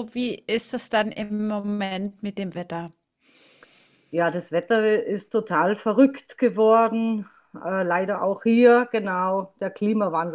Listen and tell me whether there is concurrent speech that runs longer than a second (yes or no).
no